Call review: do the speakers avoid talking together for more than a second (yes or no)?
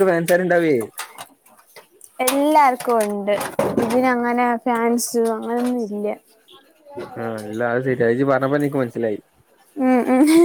yes